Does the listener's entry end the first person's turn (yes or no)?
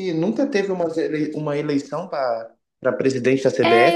yes